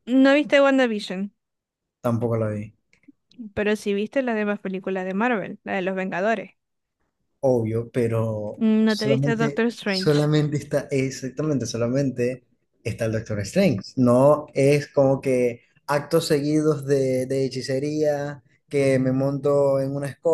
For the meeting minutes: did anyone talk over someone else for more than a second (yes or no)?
yes